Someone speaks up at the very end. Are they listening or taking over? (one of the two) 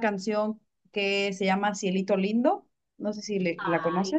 taking over